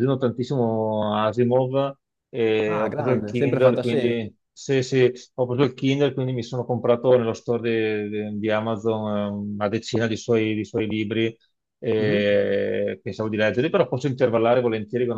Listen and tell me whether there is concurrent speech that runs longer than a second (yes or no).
yes